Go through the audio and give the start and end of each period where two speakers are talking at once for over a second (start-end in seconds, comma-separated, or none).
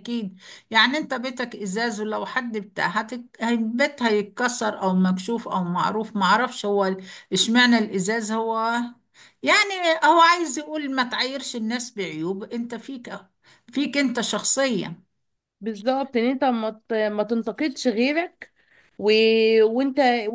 none